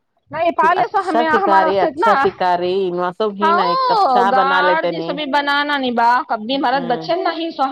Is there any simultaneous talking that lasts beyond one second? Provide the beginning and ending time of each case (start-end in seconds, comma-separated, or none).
3.4-5.2